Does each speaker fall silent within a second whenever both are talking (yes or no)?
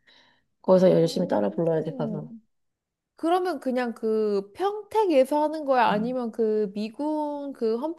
no